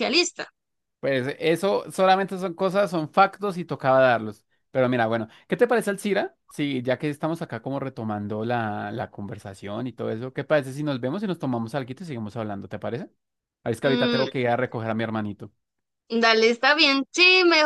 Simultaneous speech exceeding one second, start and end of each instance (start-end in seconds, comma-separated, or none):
none